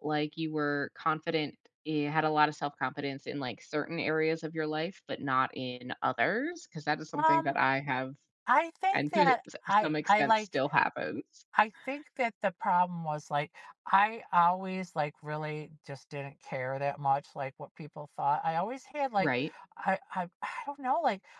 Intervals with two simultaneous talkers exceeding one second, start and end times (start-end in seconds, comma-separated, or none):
8.9-10.6